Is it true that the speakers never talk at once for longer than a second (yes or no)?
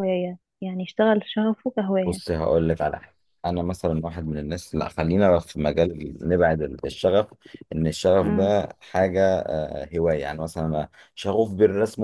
yes